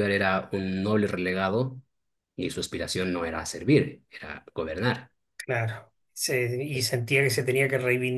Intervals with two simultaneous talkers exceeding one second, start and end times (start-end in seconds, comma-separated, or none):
none